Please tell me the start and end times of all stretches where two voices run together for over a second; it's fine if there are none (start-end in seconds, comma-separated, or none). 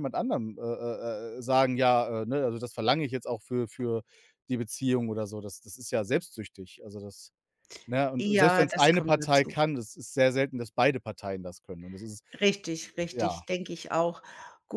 8.2-9.6